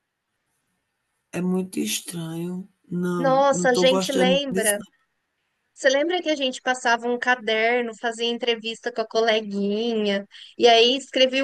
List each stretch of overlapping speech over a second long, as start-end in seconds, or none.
3.2-4.8